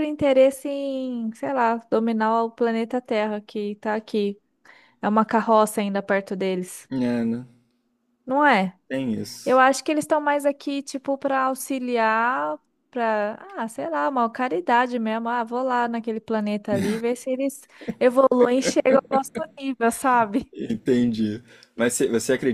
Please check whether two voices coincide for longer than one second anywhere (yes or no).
no